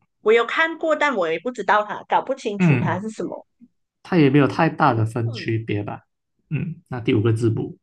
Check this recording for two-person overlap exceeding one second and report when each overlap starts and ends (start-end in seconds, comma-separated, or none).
none